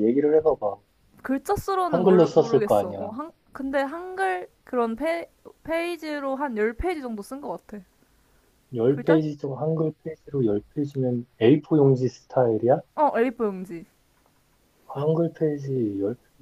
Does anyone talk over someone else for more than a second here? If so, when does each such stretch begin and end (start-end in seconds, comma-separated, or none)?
1.9-3.1